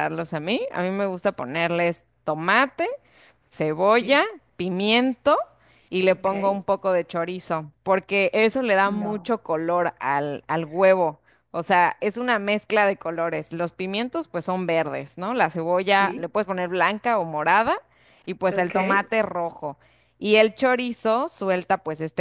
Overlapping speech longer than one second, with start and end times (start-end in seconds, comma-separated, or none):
none